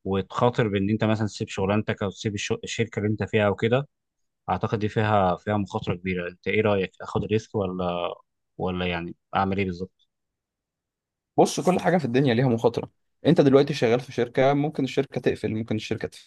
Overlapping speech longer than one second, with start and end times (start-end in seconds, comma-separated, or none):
none